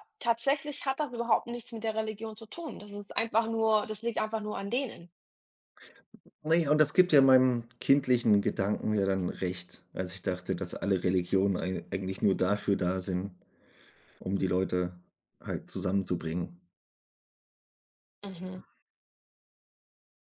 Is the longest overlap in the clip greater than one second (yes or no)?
no